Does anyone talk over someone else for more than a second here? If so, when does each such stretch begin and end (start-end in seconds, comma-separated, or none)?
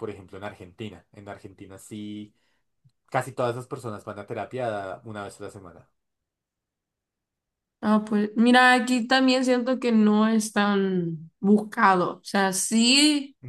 none